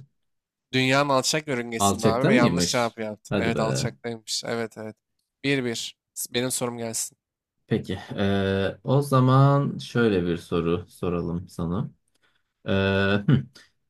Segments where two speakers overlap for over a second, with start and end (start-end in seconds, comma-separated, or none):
1.8-3.9